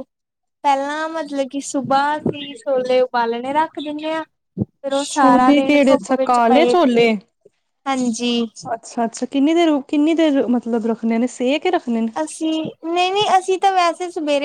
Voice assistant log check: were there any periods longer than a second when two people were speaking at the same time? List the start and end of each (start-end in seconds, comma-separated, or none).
5.1-6.7